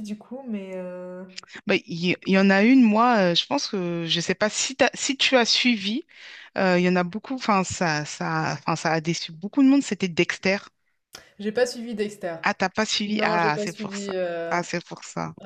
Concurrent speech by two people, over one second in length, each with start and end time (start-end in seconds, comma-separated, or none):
13.1-14.6